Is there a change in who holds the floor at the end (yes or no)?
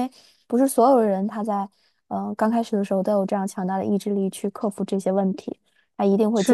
yes